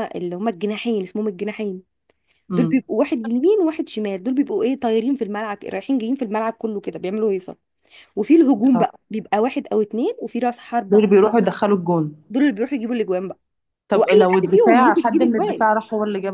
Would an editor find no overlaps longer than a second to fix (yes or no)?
no